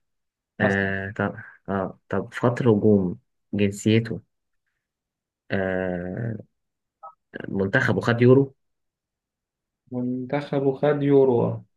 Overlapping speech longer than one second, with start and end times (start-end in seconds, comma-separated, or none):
none